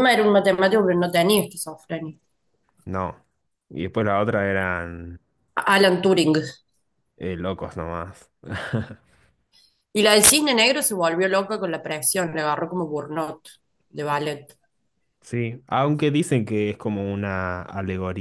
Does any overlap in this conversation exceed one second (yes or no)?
no